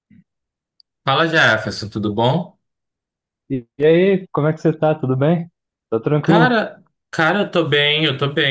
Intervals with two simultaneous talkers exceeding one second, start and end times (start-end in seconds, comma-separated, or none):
none